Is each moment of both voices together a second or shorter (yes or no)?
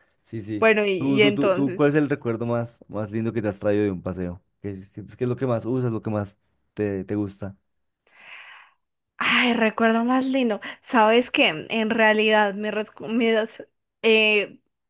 no